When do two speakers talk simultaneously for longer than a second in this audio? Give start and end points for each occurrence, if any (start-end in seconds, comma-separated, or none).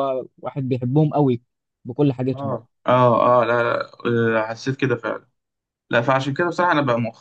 none